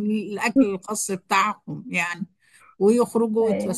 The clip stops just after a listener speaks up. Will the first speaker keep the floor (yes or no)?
yes